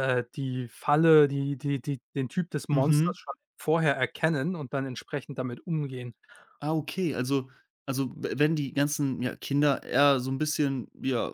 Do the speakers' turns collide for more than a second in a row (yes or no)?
no